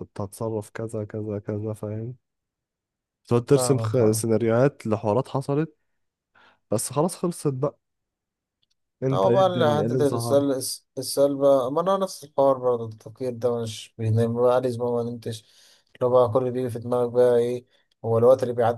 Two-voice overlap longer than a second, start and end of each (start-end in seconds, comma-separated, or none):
9.1-10.4